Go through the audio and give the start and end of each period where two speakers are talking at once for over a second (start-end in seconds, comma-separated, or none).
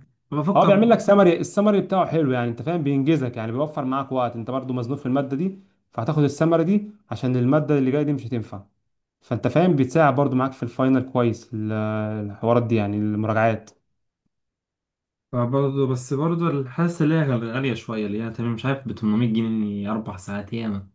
none